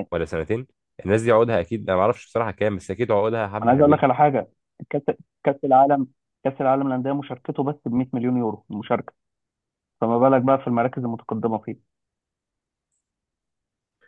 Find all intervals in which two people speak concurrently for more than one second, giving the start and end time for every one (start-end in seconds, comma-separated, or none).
none